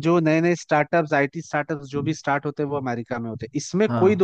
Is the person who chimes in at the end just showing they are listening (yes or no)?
yes